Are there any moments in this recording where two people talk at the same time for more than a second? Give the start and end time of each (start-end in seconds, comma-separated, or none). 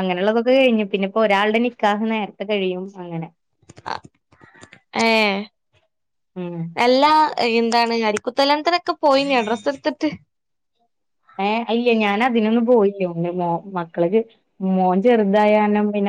none